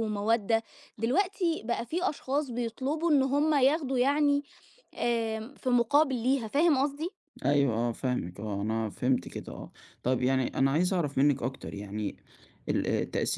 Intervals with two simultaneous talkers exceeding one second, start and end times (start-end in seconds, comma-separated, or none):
none